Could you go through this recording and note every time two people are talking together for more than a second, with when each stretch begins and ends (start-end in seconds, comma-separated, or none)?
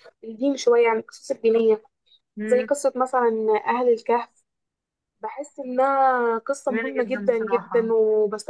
6.7-7.9